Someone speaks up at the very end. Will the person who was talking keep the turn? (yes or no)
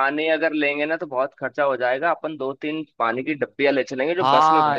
no